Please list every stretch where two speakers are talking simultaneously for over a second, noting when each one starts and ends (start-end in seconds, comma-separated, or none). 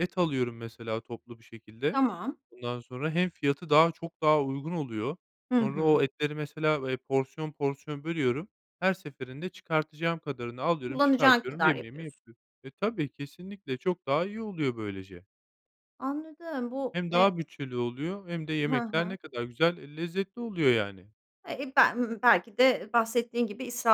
10.9-12.2